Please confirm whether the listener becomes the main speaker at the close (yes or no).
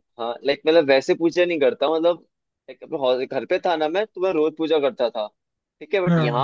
no